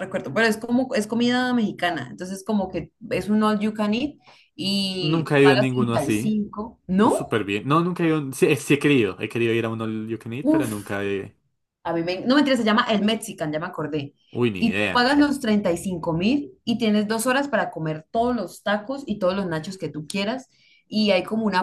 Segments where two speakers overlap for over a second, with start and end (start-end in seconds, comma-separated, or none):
5.0-6.4